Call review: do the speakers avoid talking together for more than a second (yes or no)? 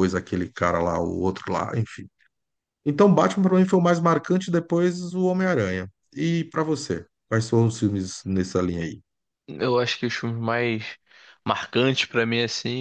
yes